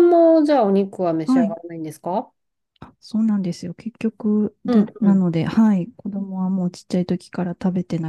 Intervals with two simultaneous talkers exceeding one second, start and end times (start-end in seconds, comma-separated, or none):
none